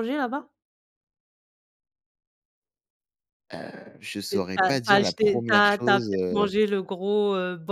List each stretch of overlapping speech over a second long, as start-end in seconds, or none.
4.3-6.5